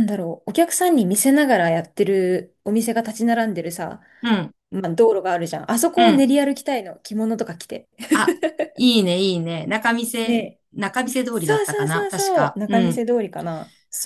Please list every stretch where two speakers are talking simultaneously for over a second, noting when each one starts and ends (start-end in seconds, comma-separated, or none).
11.3-13.0